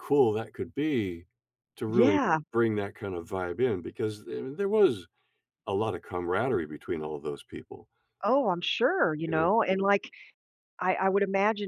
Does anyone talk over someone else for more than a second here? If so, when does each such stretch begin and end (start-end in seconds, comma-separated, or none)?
none